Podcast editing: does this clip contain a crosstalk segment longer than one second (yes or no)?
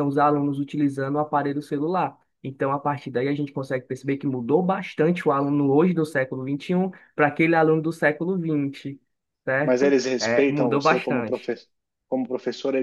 yes